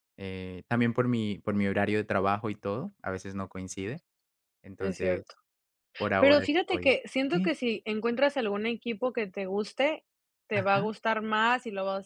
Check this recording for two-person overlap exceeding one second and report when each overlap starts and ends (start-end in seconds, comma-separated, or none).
6.2-7.6